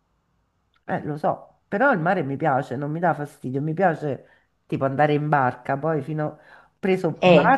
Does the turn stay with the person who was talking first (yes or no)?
yes